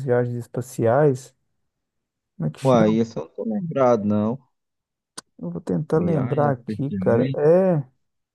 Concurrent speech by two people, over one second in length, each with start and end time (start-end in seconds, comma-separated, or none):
6.0-7.4